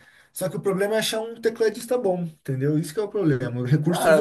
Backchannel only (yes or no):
no